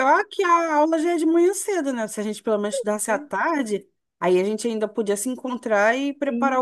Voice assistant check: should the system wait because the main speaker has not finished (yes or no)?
yes